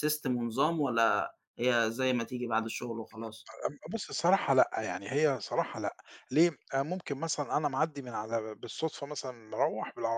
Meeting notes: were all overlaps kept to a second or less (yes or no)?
yes